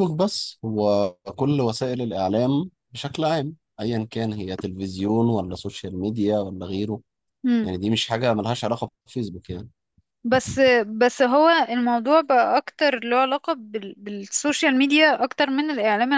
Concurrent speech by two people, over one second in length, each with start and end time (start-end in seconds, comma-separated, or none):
none